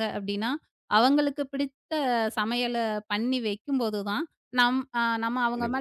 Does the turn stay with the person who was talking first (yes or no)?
yes